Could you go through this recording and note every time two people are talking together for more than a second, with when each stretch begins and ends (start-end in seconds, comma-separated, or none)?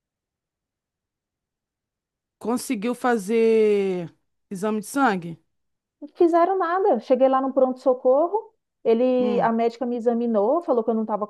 none